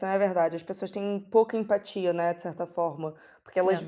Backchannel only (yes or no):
yes